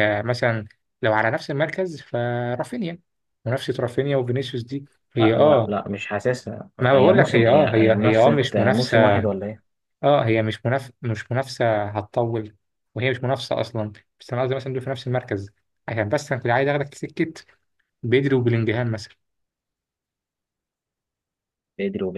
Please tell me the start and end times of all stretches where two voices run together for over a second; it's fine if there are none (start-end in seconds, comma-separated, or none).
6.8-9.2